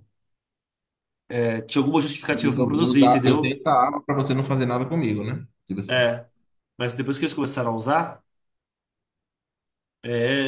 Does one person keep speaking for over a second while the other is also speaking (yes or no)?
yes